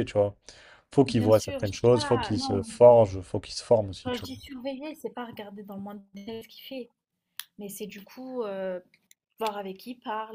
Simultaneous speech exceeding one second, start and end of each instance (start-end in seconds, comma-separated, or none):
1.1-2.6